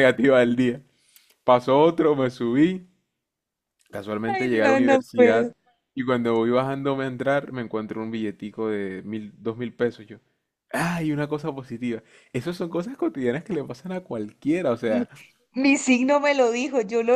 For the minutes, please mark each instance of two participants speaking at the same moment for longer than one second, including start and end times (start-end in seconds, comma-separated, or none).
4.3-5.5